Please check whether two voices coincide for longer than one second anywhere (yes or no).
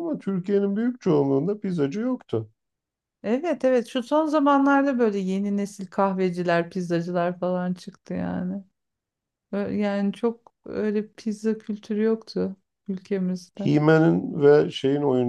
no